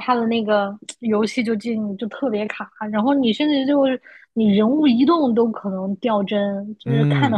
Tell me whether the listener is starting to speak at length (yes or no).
yes